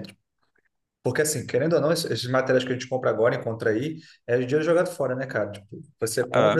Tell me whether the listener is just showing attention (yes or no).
yes